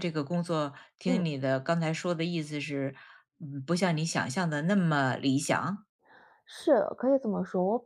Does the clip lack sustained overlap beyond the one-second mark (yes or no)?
yes